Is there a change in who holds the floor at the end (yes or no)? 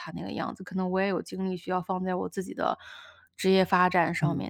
yes